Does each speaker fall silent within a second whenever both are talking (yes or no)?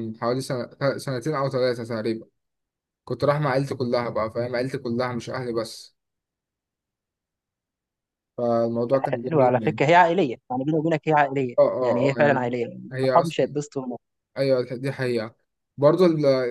no